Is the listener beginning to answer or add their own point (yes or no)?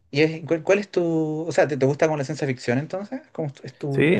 yes